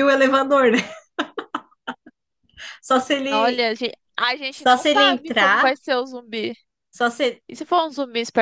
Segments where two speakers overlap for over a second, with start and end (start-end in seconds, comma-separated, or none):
4.5-5.7